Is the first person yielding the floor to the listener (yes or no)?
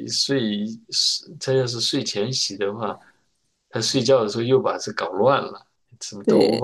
yes